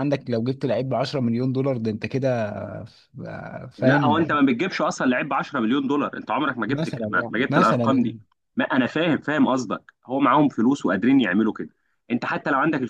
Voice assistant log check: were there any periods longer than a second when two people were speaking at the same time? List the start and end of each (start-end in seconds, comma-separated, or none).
6.7-8.2